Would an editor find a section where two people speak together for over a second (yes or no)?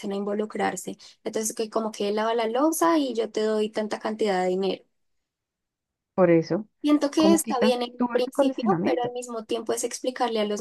yes